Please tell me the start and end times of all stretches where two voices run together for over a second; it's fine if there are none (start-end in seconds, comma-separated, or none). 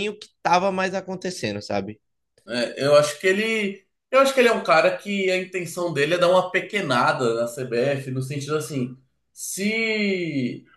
none